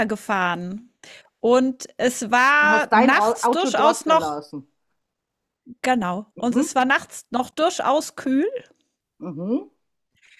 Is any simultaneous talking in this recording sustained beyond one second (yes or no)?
yes